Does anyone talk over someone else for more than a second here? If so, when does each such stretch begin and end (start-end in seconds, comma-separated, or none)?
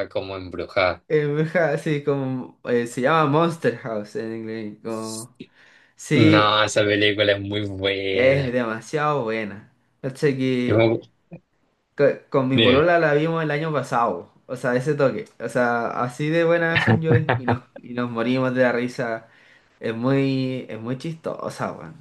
none